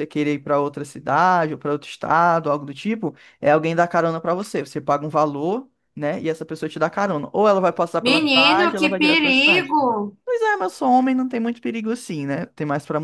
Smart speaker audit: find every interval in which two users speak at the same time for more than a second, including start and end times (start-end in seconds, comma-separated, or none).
8.0-9.8